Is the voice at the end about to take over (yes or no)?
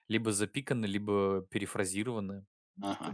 no